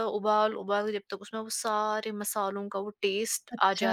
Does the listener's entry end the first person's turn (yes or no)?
yes